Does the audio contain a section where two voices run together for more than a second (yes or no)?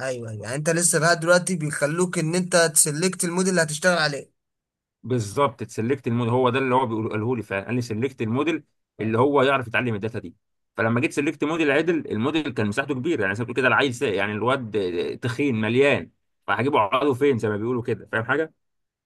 no